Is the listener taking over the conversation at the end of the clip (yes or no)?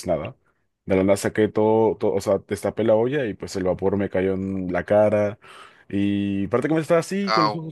no